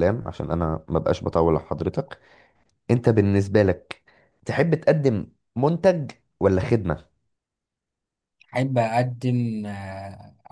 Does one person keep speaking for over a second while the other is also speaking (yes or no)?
no